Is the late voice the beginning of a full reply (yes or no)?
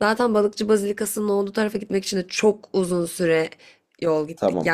yes